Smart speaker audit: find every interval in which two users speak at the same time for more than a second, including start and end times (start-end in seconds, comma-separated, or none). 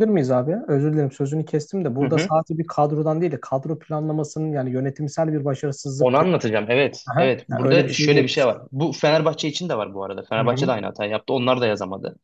7.0-8.3